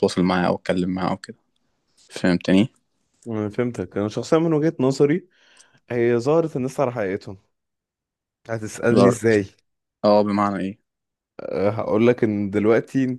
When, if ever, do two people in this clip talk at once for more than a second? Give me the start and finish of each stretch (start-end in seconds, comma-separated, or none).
none